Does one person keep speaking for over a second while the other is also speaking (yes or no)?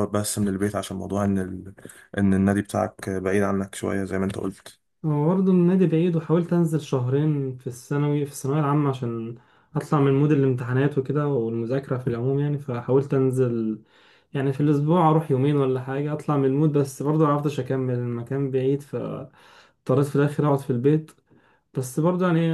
no